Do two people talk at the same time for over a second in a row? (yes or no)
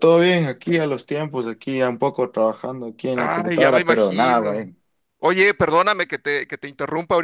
yes